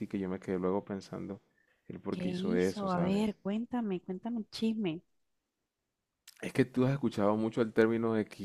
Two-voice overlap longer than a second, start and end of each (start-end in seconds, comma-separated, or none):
2.1-3.4